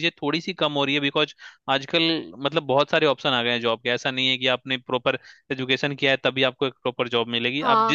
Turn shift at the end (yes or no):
yes